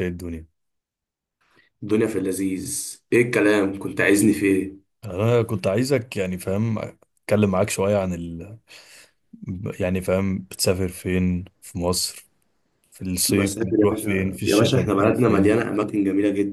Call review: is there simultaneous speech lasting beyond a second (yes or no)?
yes